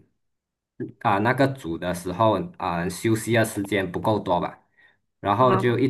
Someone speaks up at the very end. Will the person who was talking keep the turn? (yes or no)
yes